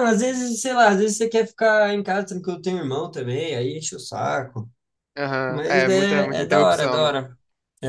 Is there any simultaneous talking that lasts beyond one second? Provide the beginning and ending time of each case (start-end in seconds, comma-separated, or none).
5.5-7.2